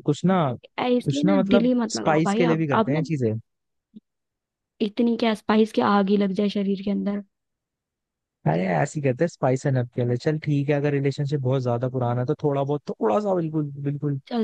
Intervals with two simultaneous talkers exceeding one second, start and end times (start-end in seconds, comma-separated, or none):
0.8-3.0